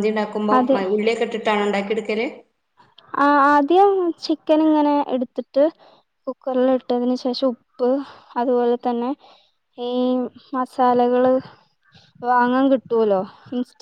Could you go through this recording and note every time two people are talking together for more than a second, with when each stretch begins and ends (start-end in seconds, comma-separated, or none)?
none